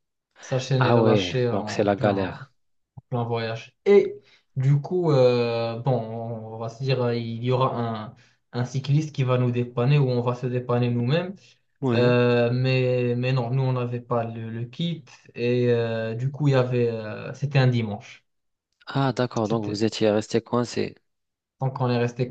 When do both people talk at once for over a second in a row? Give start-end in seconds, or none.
0.8-2.4